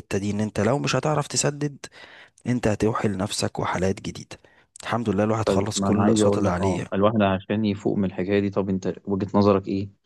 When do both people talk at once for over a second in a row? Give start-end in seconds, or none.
5.5-6.9